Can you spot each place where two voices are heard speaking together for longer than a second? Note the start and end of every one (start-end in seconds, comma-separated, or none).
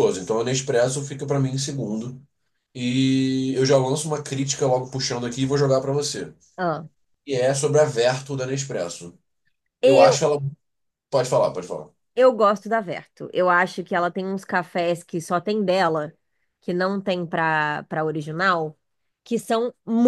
none